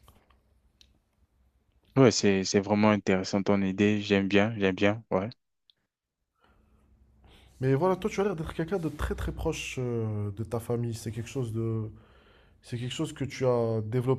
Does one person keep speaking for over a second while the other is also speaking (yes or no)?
no